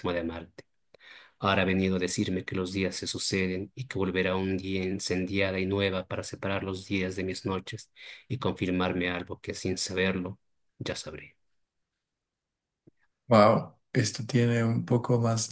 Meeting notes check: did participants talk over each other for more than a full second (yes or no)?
no